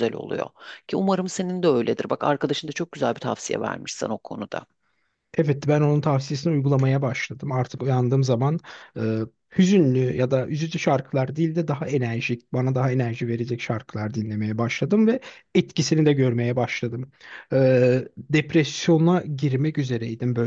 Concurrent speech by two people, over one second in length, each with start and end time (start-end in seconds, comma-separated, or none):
none